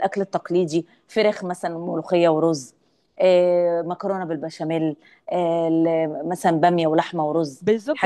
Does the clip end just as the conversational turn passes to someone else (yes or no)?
yes